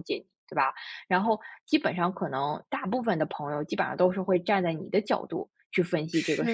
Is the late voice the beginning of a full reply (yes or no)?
no